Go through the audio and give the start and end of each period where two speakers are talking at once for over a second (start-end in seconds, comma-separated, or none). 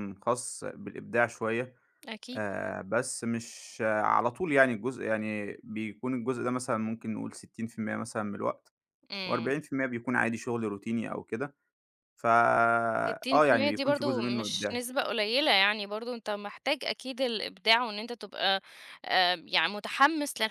13.1-14.8